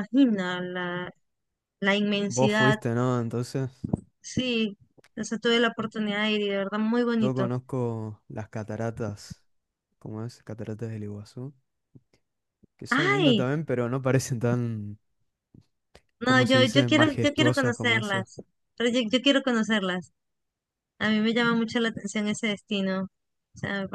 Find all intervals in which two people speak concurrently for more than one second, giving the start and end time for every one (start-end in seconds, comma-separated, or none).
16.2-18.2